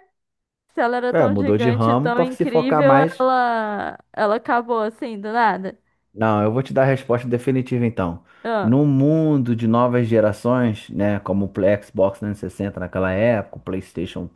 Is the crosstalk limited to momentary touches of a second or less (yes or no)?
no